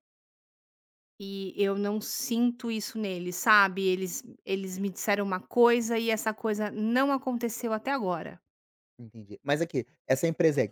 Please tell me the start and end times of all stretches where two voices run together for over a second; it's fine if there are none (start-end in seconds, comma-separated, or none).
none